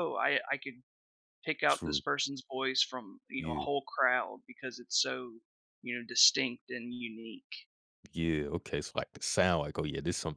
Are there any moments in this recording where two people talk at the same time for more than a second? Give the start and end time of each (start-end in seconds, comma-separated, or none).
none